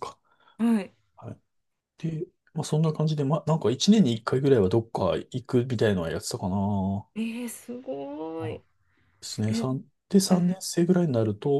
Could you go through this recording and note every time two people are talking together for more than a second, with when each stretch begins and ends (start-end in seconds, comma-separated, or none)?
none